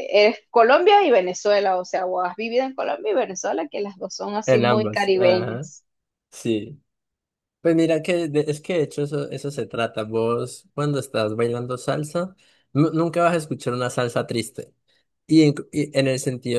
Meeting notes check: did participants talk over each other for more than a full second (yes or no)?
yes